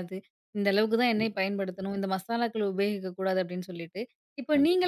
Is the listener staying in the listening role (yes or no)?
yes